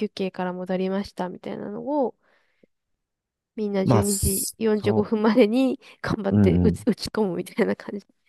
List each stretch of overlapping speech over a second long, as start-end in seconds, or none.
3.8-5.1